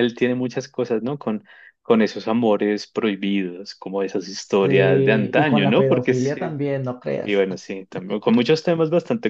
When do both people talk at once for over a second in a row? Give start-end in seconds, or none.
4.6-6.6